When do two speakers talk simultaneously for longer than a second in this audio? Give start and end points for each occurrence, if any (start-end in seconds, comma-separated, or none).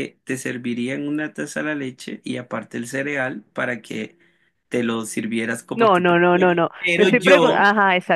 5.7-7.6